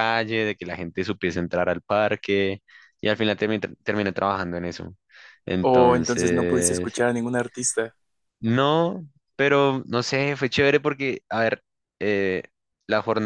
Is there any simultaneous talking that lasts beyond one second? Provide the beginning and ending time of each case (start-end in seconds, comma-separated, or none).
5.6-6.9